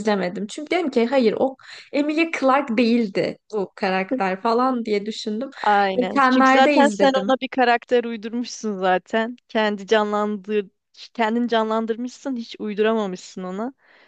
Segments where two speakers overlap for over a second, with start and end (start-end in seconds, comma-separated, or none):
6.0-7.3